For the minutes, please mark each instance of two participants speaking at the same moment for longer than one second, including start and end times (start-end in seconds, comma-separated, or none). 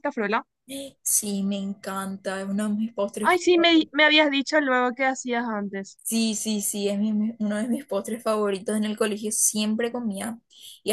none